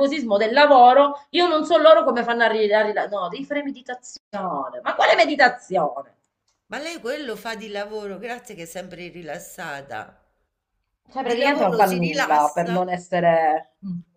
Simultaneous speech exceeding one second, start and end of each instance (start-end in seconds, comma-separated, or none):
11.2-12.8